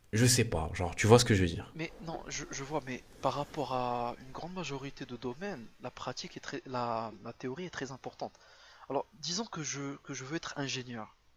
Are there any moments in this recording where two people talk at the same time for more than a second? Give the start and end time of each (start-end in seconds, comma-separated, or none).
none